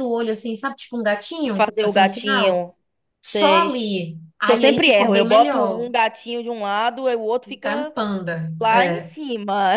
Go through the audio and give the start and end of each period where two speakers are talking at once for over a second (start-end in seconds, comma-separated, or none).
1.4-2.7, 4.5-5.9